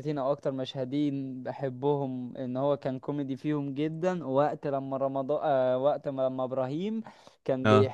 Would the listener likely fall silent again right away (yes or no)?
yes